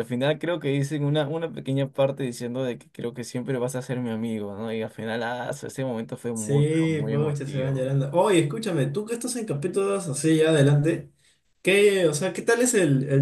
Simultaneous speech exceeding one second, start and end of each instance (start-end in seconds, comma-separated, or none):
6.3-7.9